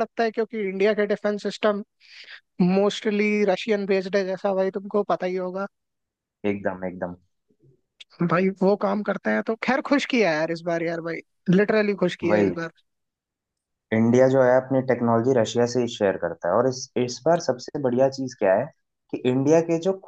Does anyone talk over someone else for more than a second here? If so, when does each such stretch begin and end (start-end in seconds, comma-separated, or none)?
none